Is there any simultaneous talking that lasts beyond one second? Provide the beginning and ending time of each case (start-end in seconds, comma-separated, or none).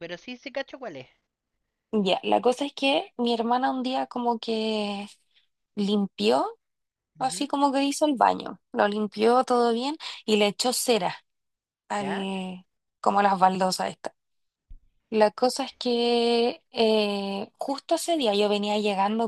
none